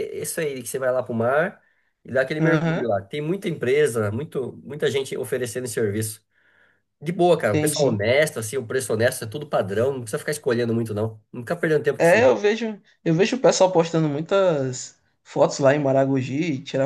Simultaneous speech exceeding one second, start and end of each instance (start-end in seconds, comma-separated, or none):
none